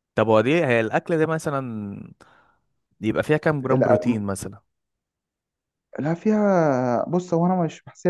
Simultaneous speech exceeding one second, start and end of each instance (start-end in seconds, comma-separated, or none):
none